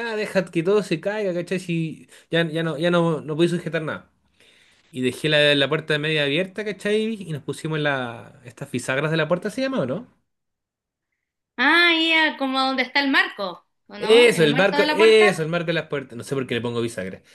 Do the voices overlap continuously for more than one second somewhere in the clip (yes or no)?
yes